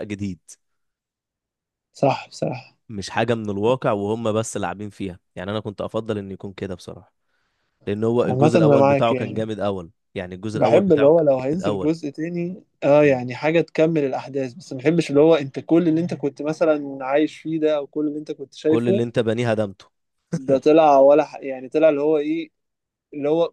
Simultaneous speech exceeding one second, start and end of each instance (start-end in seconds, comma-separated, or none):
8.2-9.5, 10.5-11.9